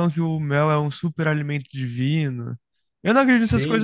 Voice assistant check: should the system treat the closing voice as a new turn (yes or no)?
no